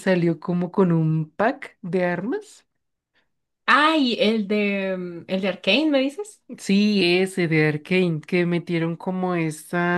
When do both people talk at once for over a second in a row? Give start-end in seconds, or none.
none